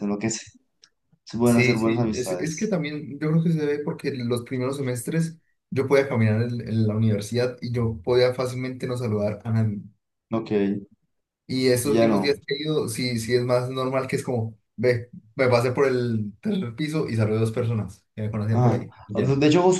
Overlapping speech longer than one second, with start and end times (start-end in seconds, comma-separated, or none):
1.4-2.8